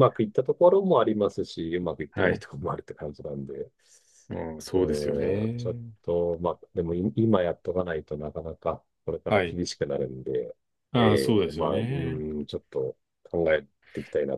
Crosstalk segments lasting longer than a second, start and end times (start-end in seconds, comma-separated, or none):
11.0-12.2